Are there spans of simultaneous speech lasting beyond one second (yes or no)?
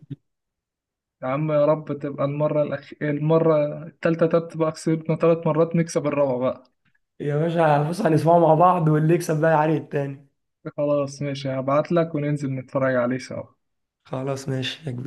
no